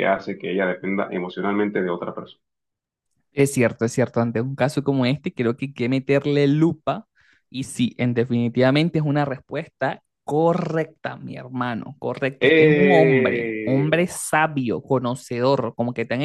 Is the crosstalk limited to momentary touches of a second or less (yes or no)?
no